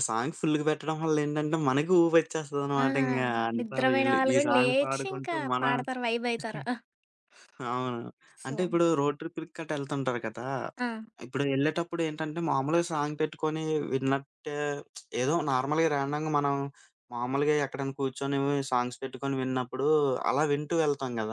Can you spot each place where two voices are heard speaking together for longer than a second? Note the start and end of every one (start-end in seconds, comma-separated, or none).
3.6-5.7